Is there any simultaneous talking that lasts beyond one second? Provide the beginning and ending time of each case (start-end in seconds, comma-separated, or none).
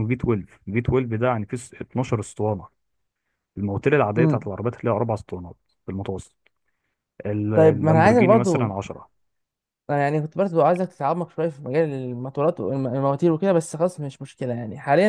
7.5-8.7